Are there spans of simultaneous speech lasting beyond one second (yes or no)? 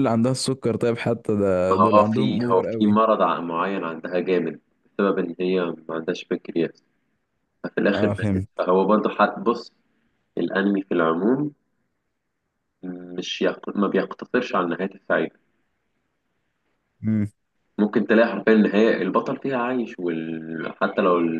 yes